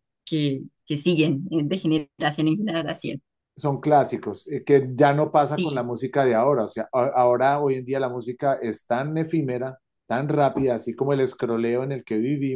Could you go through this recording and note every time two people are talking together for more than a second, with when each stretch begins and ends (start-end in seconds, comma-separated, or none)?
none